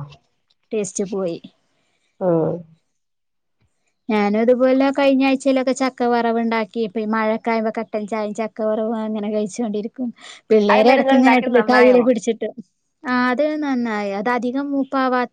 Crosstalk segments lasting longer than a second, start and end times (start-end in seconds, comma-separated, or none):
10.7-12.0